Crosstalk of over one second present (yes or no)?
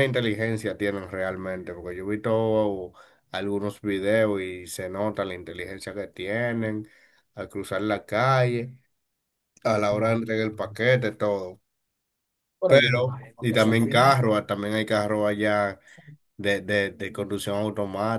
yes